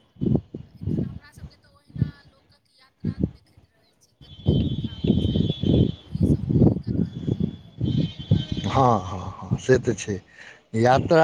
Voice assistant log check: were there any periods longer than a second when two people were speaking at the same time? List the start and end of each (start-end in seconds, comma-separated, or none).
none